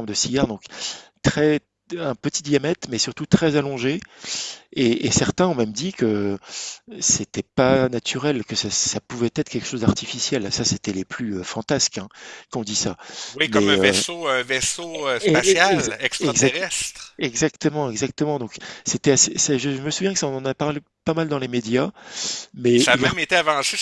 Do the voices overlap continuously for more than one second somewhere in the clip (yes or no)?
yes